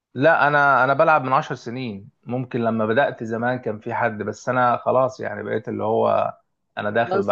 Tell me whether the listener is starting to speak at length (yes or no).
yes